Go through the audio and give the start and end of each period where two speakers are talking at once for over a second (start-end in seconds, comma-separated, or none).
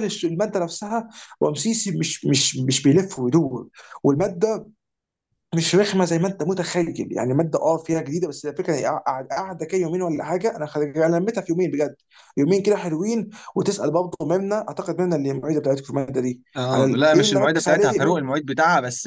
16.6-18.2